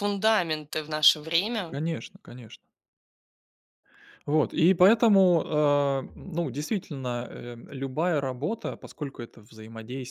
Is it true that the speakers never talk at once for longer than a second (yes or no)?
yes